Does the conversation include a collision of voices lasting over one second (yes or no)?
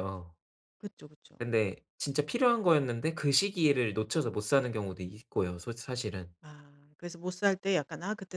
no